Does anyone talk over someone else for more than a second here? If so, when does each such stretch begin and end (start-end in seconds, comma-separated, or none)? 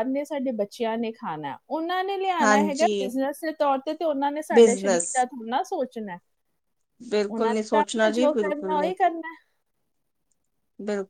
7.3-8.8